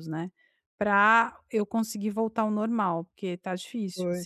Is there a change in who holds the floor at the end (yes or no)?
yes